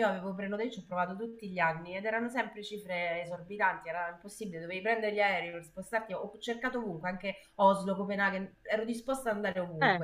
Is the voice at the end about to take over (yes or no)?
no